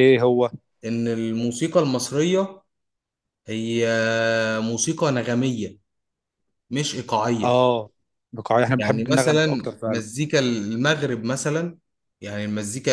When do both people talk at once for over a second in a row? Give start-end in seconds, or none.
8.8-10.1